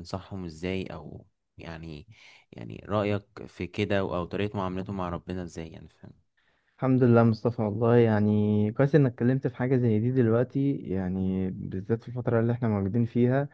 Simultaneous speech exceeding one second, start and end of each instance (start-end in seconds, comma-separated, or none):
none